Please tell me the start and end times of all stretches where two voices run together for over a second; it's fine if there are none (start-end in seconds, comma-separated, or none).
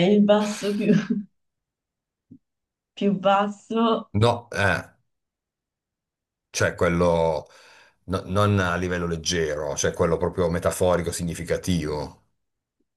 none